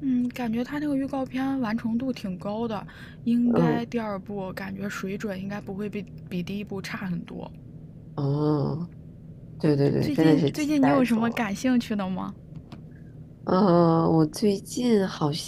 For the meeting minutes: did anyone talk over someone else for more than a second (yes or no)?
yes